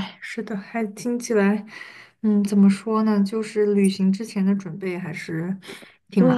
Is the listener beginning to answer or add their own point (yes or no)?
yes